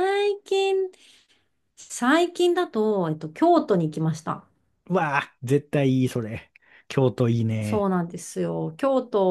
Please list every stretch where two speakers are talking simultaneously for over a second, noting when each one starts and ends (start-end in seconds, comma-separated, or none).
none